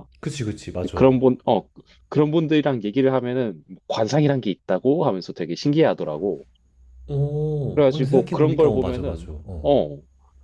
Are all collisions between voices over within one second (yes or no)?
no